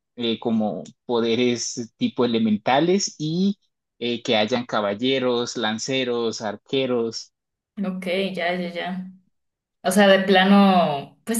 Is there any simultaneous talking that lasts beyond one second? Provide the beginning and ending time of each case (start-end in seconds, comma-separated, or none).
none